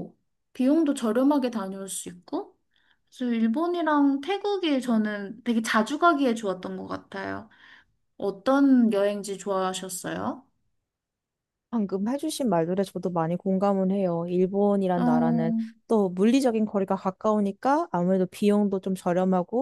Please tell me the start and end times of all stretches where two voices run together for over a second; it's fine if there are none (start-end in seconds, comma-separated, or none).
none